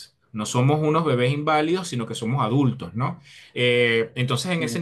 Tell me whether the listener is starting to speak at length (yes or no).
no